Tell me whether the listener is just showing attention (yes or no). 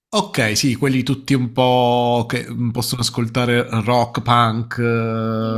no